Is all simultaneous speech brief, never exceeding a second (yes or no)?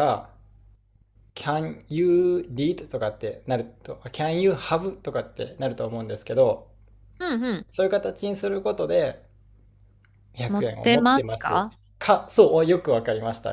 no